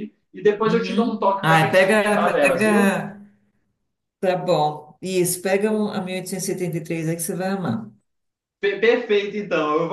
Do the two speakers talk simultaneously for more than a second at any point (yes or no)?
yes